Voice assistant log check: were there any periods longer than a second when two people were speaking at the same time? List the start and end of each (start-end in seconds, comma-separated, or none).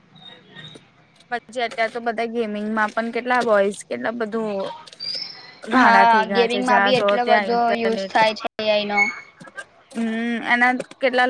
5.8-8.1